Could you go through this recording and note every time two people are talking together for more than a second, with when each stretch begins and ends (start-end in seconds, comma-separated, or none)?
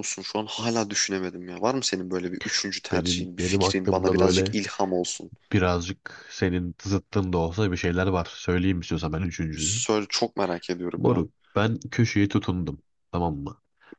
2.9-4.5